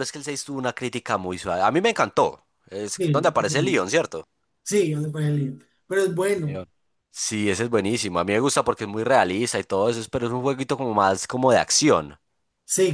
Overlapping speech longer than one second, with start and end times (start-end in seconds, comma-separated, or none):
none